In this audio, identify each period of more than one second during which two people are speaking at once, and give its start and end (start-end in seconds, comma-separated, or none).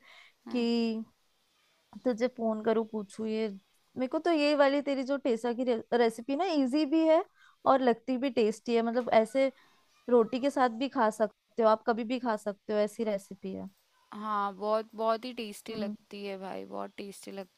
none